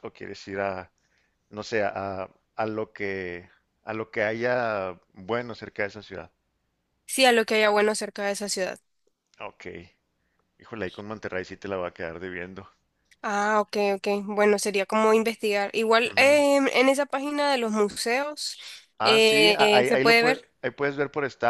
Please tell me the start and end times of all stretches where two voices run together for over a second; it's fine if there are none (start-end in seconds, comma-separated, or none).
19.0-20.5